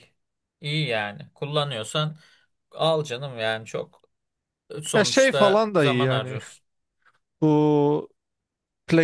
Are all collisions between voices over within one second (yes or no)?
no